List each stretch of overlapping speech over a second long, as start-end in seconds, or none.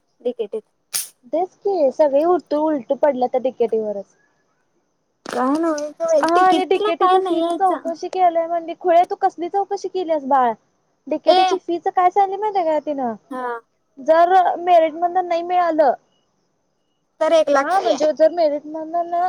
none